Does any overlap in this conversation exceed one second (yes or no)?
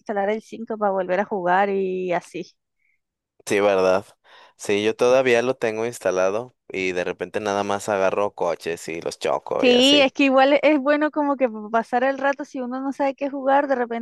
no